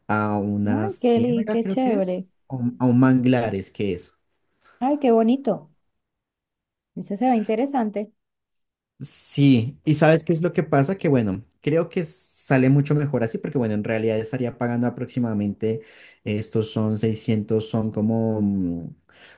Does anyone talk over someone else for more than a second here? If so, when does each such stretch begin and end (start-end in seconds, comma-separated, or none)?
0.7-2.3